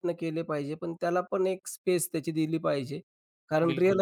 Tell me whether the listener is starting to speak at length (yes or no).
no